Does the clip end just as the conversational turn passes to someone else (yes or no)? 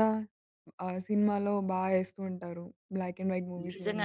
yes